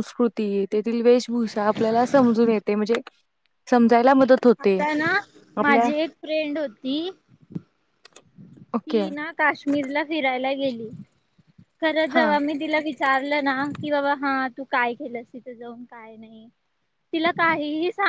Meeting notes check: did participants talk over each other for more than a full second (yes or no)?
no